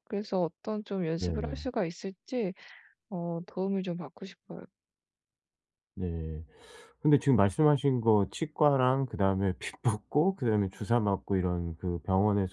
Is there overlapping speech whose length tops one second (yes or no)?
no